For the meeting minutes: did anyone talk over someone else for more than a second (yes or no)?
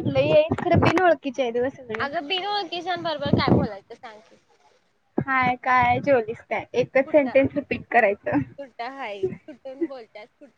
no